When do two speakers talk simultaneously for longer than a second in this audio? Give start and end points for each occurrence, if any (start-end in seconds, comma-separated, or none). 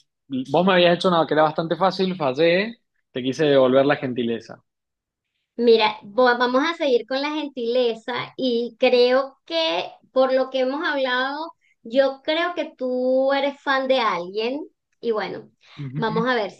none